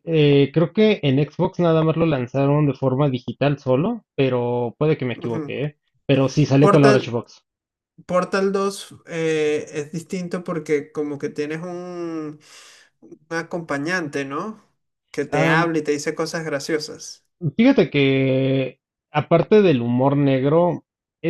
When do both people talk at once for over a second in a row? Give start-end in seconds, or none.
none